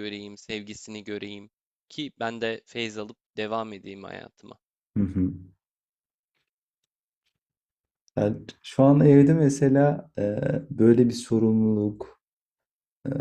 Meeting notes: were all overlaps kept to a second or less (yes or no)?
yes